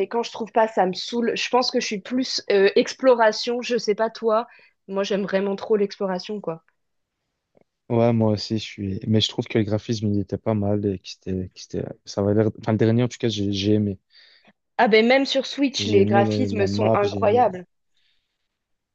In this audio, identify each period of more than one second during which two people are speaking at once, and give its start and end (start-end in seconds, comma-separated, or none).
15.8-17.5